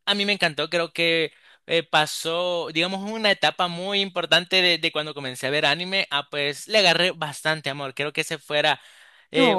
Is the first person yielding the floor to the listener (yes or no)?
no